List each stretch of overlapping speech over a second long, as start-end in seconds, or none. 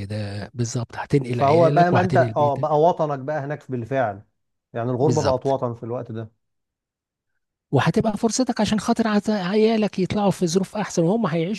1.3-2.7